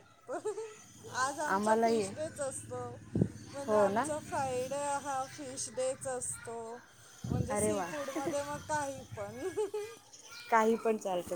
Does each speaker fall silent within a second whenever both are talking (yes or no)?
yes